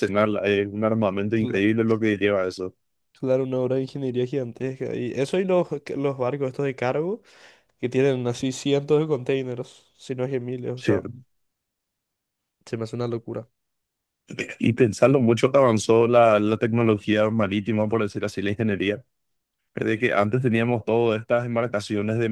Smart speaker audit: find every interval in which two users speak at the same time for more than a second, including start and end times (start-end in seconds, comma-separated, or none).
none